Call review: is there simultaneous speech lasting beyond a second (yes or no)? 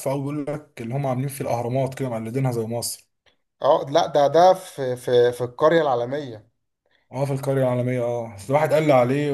no